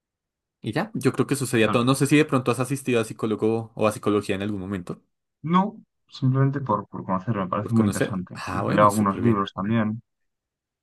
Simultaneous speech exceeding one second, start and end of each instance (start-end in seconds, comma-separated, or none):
7.6-9.4